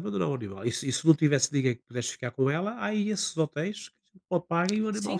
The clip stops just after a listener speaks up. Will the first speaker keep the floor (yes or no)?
no